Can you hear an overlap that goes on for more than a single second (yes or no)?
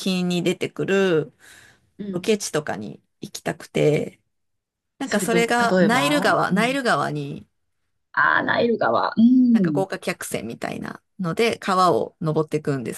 yes